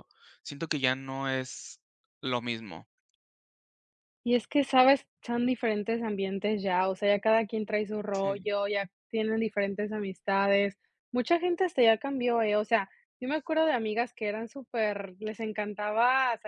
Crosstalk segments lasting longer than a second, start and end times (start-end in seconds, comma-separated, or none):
none